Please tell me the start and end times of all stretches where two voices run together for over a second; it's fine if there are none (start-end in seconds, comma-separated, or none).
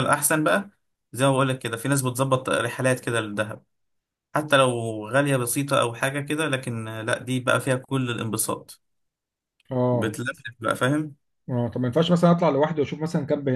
none